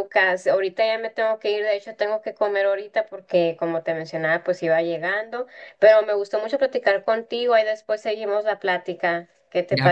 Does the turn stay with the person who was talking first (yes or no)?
no